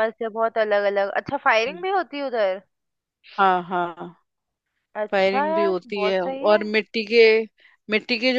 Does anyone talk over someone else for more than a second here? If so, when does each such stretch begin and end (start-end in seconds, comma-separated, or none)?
5.1-6.6